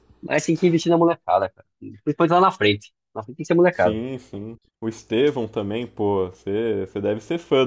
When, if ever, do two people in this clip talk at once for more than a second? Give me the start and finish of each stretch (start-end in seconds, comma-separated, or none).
none